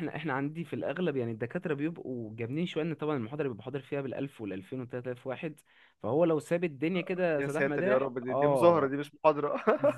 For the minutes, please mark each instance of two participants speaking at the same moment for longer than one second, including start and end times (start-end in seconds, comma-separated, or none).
7.4-9.0